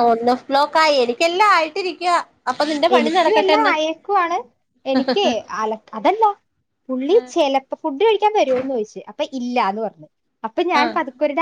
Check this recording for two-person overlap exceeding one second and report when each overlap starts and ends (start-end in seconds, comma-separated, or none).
none